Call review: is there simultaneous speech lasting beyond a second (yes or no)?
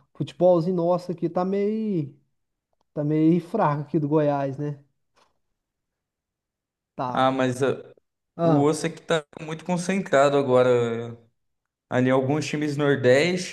no